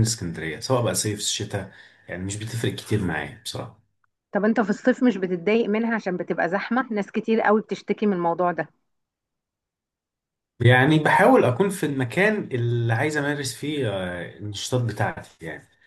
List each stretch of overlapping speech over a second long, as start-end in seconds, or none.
none